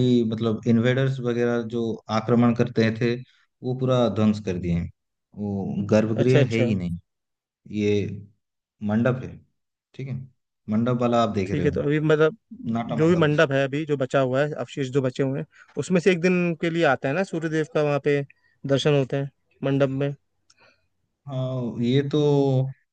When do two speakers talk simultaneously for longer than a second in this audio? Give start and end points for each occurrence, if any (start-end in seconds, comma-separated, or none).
none